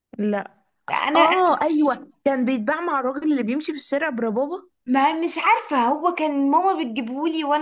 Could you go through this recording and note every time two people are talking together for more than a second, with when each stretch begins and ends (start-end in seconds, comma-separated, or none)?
none